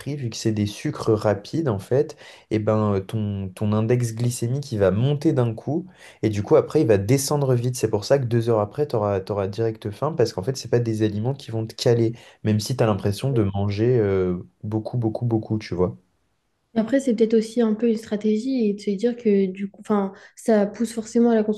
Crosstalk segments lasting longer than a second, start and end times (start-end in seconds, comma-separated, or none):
none